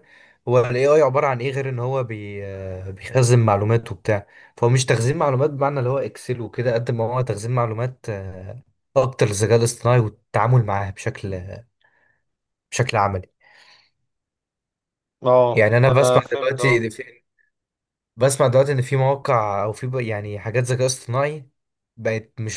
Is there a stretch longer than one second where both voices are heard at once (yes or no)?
yes